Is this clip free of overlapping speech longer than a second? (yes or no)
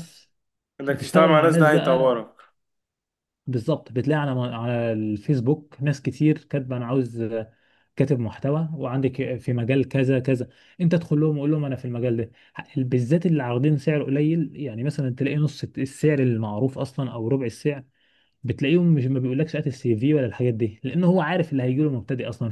no